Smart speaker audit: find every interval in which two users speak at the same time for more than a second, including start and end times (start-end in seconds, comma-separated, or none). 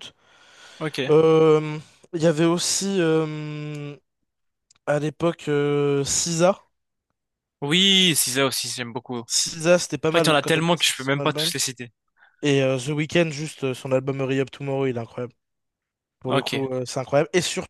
10.1-11.5